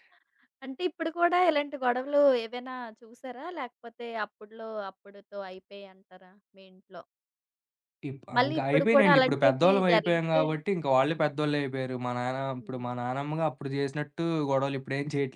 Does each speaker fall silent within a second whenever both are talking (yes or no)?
no